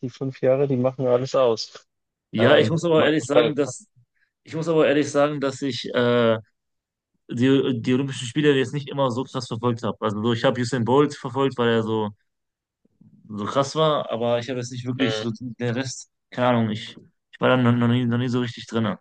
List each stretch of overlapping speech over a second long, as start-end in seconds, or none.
2.4-3.7